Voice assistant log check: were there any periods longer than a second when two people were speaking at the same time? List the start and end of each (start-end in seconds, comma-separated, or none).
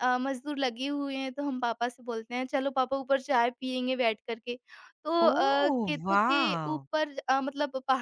5.3-6.8